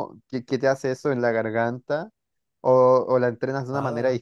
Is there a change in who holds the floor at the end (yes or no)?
yes